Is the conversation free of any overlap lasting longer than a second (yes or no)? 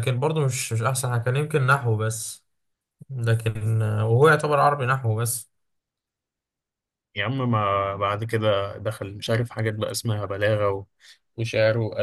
yes